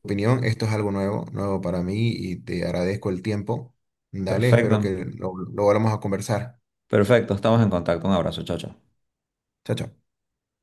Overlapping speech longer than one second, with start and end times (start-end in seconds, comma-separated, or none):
none